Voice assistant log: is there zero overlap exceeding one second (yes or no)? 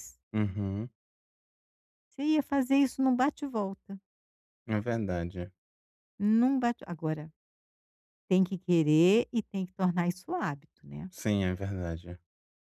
yes